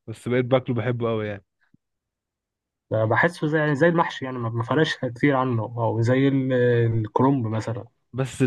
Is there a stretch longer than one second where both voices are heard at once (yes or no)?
no